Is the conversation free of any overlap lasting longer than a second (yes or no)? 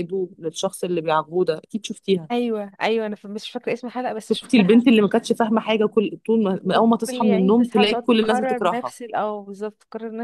no